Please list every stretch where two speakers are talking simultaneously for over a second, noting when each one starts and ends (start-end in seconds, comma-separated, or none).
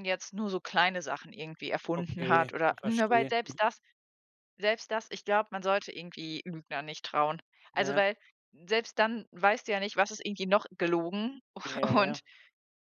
1.9-3.6